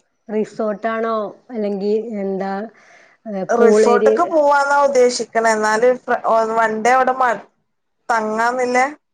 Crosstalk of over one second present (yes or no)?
no